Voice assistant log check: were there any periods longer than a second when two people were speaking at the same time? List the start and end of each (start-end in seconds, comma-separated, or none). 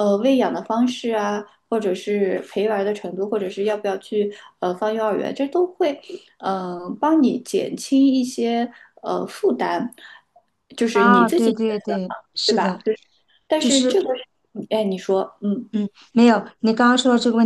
10.9-12.8